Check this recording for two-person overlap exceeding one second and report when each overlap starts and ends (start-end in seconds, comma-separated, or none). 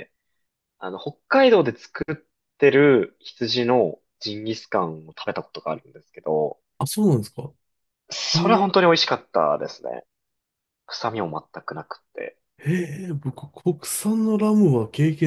none